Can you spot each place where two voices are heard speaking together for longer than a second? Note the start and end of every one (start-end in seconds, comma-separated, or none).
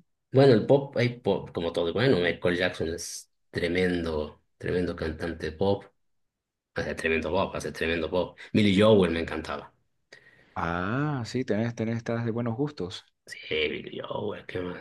none